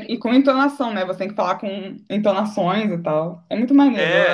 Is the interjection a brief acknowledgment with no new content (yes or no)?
no